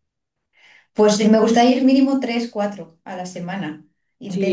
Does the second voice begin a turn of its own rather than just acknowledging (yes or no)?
yes